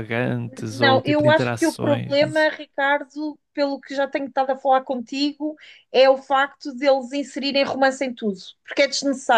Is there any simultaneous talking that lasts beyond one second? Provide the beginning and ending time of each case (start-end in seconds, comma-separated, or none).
0.7-2.5